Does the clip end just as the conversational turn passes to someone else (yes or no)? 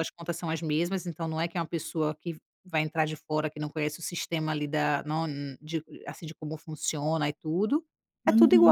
yes